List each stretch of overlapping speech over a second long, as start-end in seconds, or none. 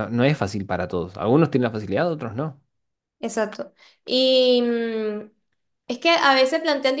none